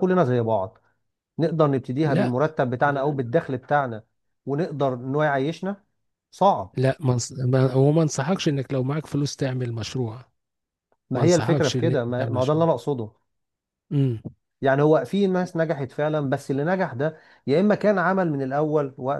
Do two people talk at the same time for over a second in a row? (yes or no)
yes